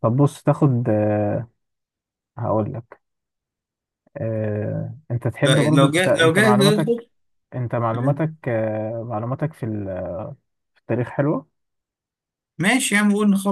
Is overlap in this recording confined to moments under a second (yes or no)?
no